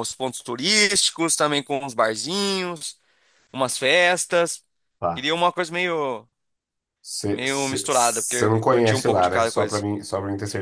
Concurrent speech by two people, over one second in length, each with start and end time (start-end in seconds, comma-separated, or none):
7.3-9.8